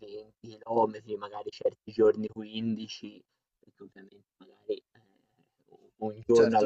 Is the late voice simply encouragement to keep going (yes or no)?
yes